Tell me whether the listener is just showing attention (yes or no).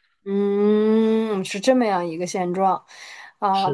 yes